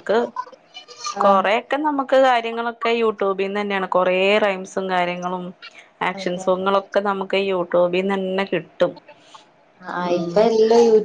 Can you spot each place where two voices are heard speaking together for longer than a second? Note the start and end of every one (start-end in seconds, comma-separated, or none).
none